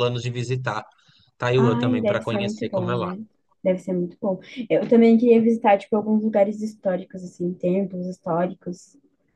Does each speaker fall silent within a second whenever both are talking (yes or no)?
no